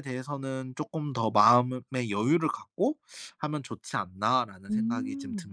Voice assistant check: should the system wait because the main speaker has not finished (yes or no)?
no